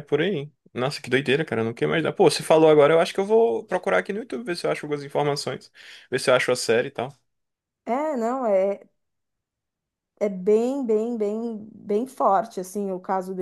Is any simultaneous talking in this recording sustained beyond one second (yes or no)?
no